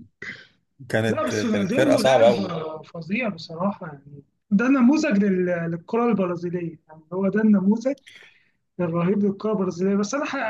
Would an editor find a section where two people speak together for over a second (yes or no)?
yes